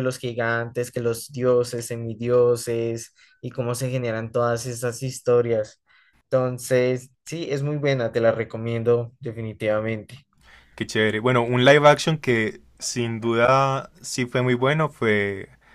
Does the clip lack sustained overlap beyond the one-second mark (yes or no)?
yes